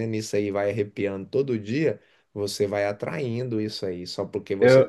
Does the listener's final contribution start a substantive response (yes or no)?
no